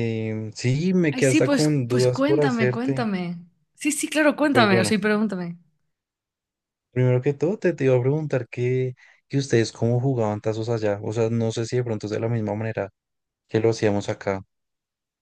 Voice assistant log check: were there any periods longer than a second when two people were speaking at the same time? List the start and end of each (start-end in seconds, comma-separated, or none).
1.1-3.1